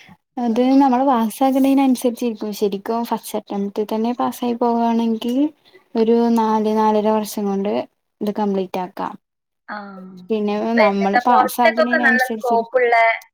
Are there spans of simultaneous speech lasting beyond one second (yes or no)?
yes